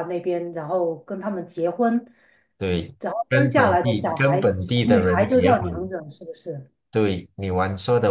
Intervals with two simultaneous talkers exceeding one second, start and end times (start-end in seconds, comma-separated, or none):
3.0-5.9